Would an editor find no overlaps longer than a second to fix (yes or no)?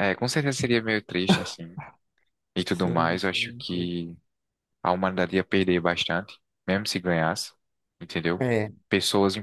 no